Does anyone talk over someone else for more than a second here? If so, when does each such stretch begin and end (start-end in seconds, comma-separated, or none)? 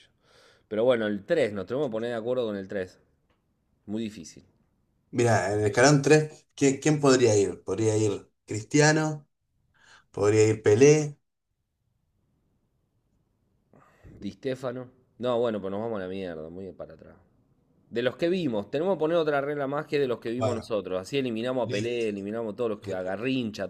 none